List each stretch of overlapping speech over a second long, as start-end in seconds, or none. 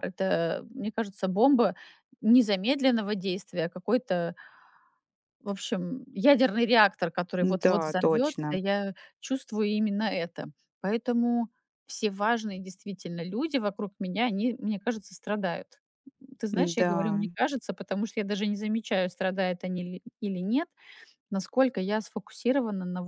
7.4-8.6